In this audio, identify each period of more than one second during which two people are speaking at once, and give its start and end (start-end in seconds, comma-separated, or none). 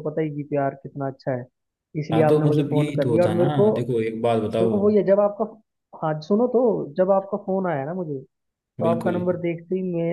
2.1-3.7